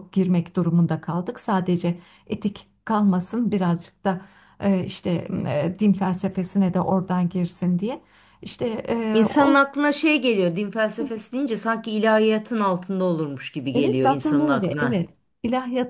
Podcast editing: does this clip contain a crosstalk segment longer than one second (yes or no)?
yes